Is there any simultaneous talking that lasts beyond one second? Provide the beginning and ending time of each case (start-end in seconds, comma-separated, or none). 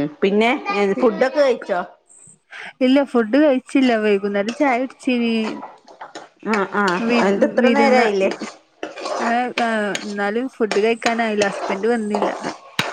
none